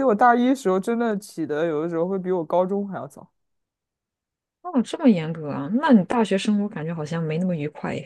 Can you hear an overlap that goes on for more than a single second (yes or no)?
no